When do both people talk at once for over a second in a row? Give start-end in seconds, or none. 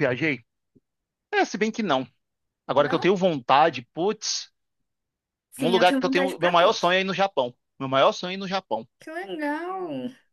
5.6-7.0